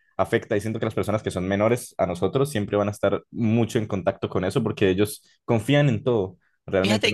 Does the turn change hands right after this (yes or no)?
yes